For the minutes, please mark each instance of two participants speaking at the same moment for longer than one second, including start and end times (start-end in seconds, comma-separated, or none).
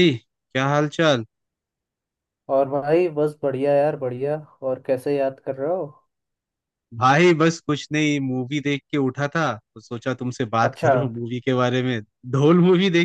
none